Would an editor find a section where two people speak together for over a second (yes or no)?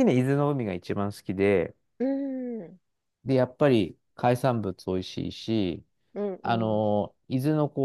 no